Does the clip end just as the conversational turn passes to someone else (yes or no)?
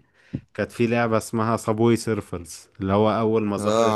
no